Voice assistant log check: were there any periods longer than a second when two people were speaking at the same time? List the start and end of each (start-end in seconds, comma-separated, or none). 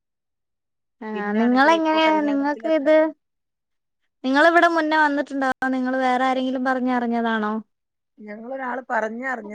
1.1-2.9